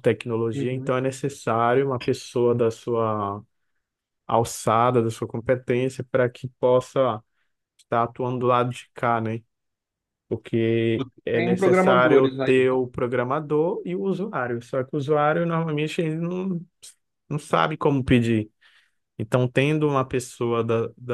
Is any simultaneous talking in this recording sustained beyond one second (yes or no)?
yes